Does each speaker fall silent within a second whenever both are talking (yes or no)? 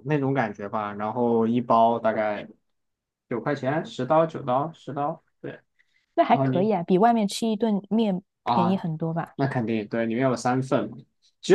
yes